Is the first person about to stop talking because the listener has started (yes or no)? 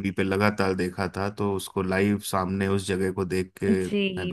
yes